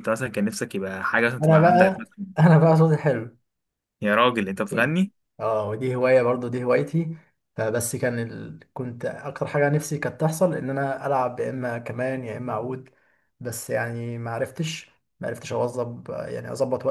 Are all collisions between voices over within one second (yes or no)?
yes